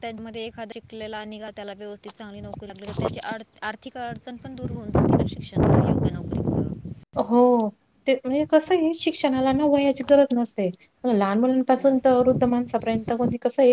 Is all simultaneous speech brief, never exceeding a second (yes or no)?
yes